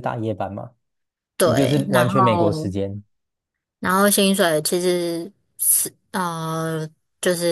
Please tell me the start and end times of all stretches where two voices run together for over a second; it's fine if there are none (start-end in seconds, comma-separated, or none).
1.4-2.7